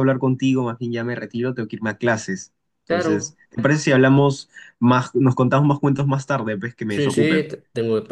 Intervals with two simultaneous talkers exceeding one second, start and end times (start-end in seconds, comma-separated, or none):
none